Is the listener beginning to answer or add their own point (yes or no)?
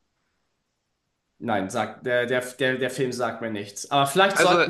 no